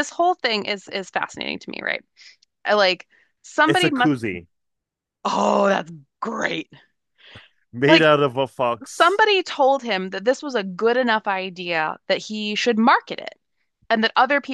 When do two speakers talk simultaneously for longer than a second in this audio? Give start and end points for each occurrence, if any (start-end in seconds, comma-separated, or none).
none